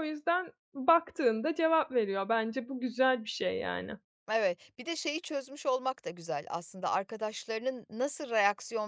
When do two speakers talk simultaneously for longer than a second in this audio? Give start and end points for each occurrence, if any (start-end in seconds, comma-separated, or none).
none